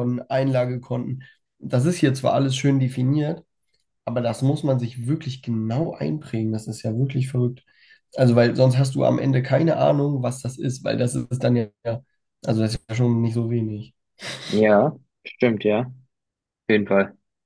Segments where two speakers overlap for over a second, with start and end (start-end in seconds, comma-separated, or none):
none